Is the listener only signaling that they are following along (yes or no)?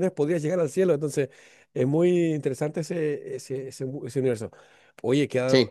yes